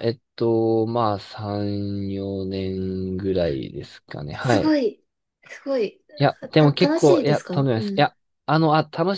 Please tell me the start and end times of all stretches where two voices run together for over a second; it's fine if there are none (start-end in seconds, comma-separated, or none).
6.5-8.1